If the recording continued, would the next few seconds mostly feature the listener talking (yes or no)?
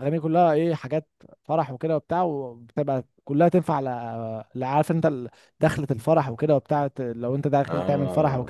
no